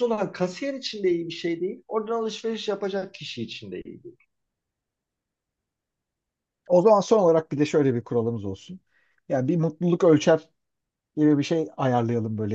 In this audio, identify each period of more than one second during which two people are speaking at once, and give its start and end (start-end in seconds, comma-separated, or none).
none